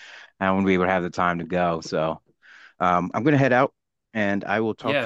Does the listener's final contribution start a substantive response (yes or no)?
yes